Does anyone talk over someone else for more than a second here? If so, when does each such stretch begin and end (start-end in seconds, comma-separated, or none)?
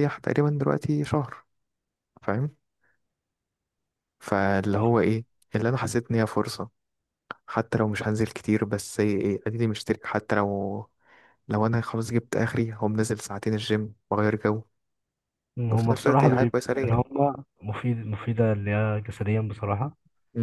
15.7-17.0